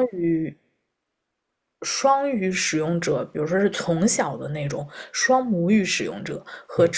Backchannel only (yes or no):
yes